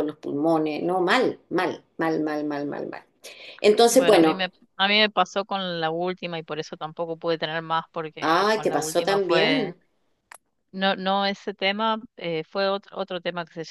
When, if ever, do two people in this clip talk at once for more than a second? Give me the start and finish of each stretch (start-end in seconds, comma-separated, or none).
8.2-9.7